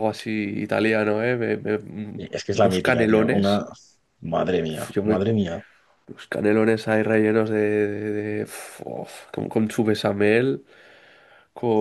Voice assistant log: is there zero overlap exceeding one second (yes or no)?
no